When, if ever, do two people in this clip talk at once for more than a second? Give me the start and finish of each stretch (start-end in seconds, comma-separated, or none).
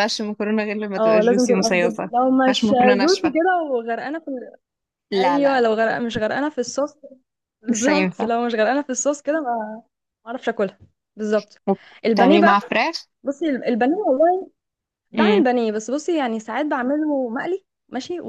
1.0-3.3